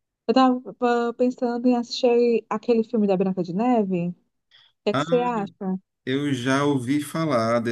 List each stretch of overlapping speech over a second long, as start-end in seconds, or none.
none